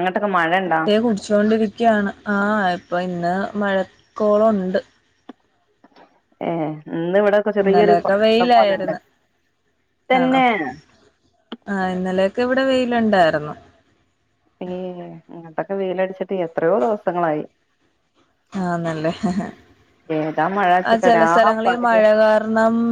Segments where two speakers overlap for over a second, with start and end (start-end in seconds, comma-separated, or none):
7.6-8.9